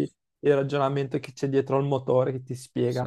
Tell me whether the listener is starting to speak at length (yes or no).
yes